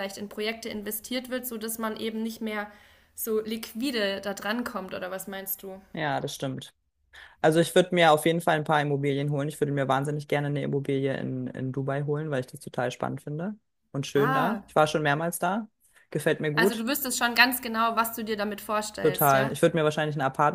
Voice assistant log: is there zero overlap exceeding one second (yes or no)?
yes